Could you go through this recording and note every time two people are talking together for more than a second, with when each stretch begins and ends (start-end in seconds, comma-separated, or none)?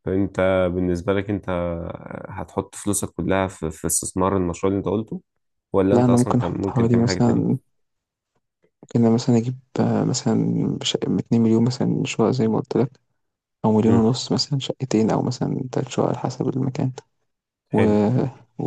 5.9-7.6